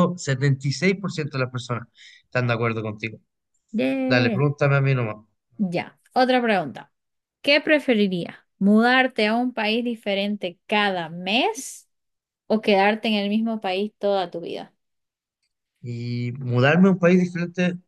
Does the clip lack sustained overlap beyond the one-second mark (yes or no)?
yes